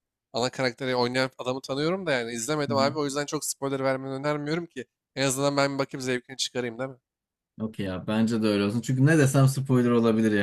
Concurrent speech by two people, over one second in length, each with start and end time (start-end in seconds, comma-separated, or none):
none